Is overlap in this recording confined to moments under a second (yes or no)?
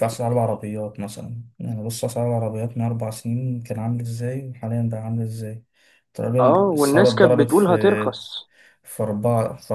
no